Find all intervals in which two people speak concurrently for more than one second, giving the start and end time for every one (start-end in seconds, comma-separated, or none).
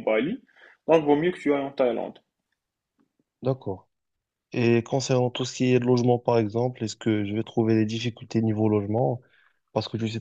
none